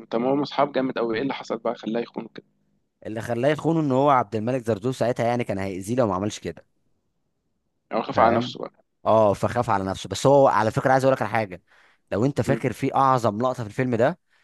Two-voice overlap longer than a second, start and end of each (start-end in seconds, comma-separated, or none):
none